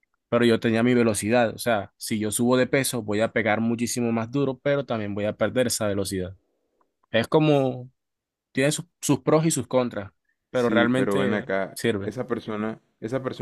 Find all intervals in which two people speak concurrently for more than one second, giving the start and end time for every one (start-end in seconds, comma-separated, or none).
10.5-12.1